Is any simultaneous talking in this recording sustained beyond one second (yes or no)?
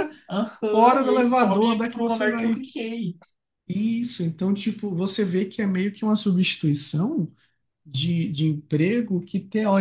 yes